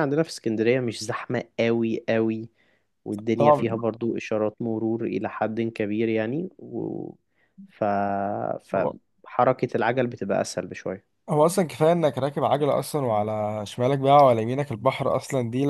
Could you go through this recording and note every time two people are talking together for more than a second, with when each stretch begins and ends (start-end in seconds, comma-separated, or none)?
none